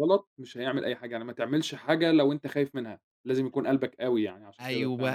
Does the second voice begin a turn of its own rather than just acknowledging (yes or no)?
yes